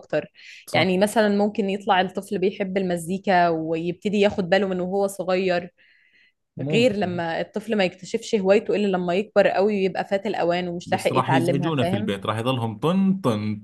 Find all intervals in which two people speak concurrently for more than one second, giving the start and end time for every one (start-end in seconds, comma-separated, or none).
10.8-12.1